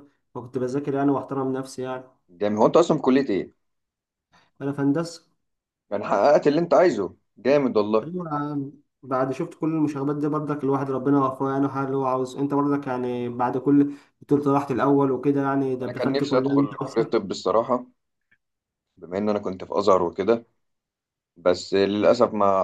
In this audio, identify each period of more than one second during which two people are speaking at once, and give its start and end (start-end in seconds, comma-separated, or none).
15.8-17.2